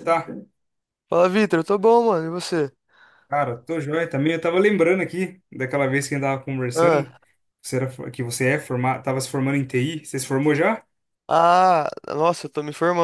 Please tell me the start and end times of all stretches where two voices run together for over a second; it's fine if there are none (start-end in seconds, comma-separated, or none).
none